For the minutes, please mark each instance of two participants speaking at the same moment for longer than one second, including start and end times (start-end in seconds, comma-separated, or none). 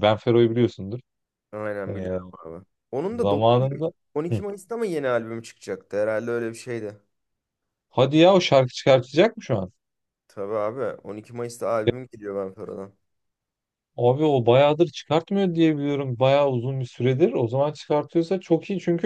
none